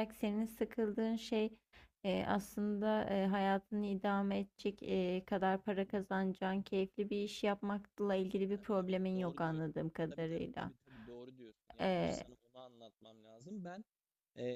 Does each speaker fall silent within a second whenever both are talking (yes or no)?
no